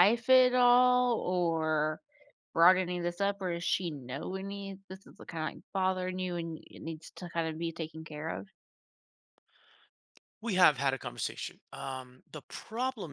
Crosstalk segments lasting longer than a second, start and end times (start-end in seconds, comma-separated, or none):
none